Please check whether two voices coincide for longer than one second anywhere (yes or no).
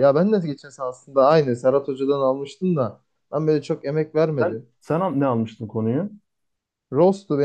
no